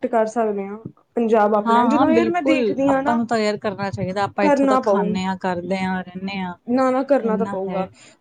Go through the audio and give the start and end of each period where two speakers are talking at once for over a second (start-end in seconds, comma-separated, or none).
1.6-3.2